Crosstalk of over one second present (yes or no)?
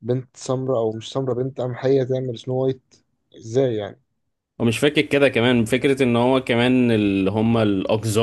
no